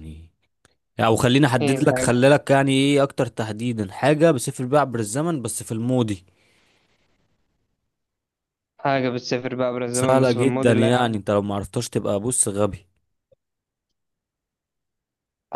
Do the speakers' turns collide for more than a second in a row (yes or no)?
yes